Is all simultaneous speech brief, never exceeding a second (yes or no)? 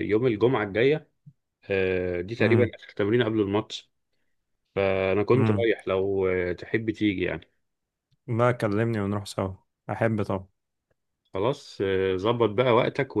yes